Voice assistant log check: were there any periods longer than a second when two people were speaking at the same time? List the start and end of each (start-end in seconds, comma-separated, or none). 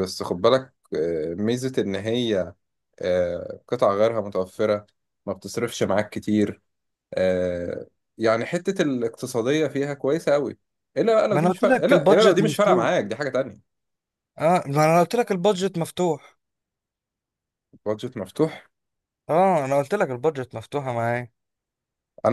11.3-12.9